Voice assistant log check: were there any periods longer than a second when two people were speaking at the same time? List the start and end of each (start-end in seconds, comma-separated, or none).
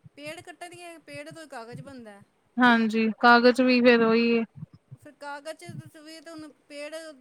none